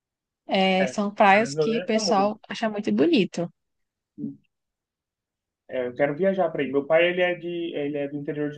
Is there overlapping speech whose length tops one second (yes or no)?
yes